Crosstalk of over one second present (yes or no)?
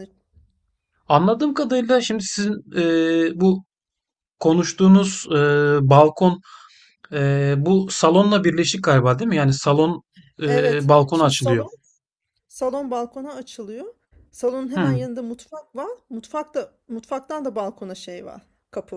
yes